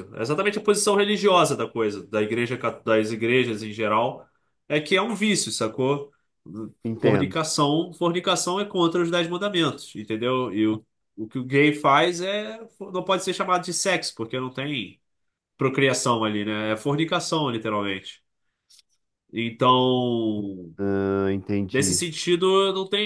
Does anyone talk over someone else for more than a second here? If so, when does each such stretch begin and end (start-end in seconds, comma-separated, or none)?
none